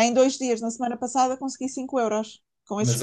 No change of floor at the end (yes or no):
no